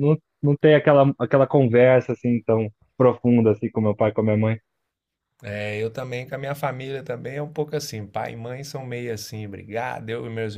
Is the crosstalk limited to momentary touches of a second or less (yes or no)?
yes